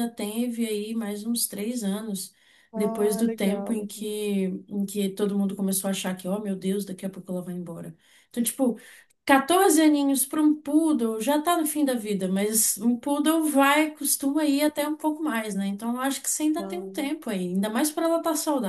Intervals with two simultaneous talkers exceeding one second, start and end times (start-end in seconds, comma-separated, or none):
2.8-4.0